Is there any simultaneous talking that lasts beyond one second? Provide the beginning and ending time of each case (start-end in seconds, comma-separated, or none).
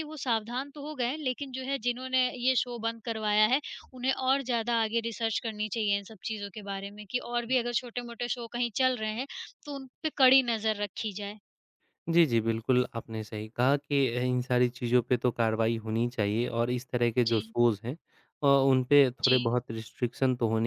none